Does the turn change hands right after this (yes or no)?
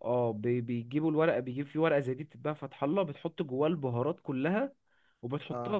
no